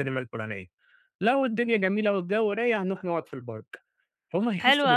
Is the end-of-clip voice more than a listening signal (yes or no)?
yes